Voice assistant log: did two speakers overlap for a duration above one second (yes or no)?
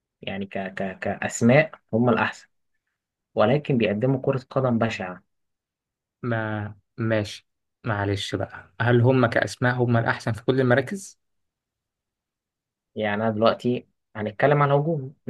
no